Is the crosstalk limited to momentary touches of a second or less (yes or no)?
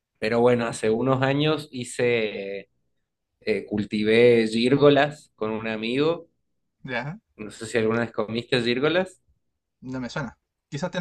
yes